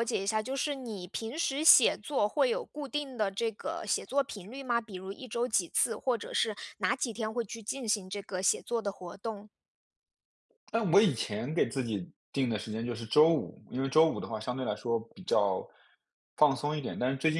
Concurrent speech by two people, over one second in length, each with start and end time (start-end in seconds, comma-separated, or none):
none